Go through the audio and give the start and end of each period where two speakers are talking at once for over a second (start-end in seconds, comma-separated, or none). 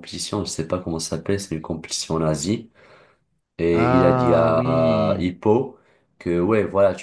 3.7-5.3